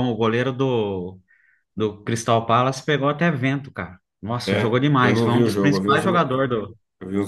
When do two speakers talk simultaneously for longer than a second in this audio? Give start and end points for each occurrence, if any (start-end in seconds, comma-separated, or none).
4.5-6.0